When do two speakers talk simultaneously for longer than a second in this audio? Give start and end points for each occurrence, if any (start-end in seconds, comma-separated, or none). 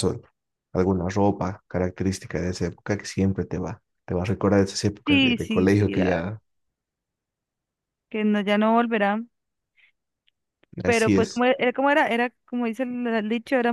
5.1-6.3